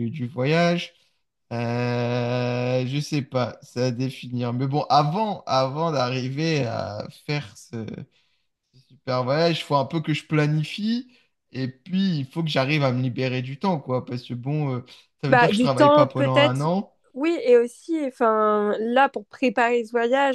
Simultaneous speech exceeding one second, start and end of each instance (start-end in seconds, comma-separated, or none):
15.3-16.7